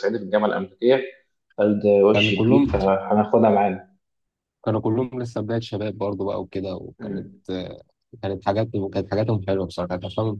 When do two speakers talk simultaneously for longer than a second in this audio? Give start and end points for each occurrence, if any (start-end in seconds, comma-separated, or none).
none